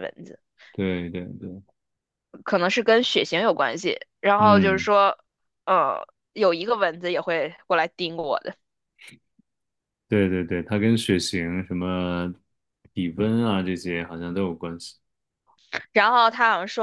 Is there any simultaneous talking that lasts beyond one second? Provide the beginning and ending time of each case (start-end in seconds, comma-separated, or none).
none